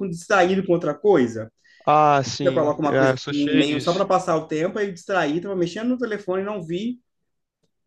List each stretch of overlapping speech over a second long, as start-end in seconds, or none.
2.4-4.0